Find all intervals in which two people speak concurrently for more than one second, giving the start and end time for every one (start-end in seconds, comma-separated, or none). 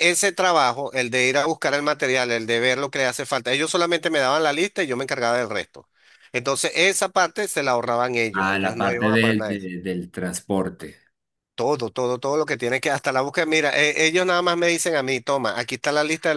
8.3-9.6